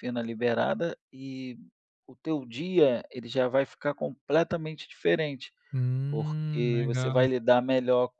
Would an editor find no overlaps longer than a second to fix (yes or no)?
no